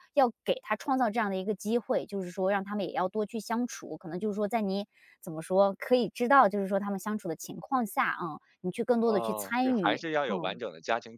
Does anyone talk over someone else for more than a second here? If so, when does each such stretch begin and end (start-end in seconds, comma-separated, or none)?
9.0-10.6